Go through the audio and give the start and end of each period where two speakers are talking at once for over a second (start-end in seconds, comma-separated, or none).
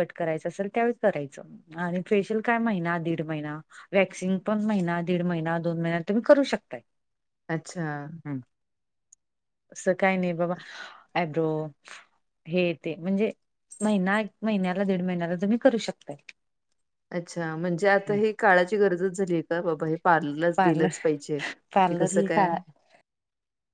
none